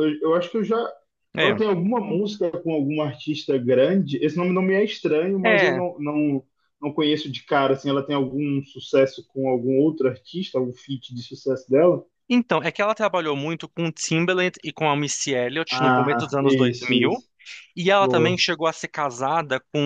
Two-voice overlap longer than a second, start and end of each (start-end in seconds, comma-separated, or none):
15.7-17.2